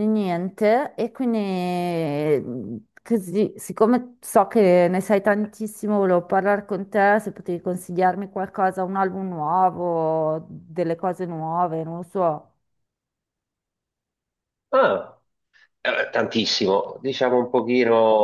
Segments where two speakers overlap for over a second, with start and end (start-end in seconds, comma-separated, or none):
none